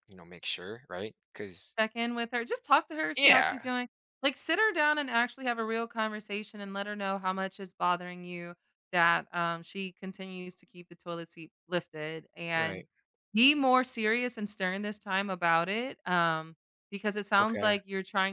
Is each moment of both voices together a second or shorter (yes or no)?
yes